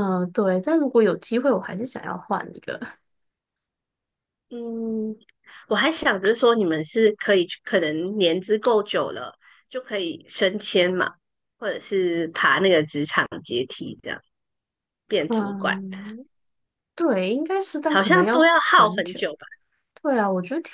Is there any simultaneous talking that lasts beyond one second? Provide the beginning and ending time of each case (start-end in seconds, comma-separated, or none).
17.9-19.2